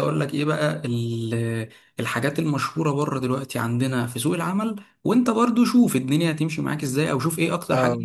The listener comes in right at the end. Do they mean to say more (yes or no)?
no